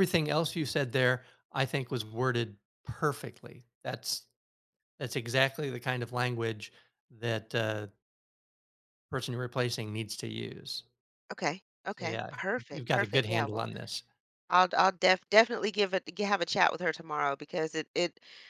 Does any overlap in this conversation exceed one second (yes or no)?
yes